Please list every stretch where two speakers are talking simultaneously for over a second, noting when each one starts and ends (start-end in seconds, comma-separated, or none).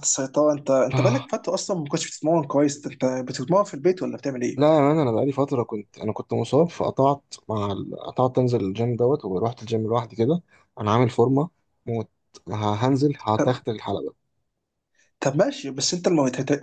none